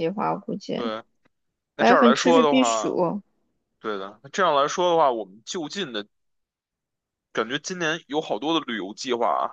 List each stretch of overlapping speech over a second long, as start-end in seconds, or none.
1.8-3.0